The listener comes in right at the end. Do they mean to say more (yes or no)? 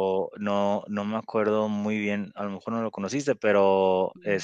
no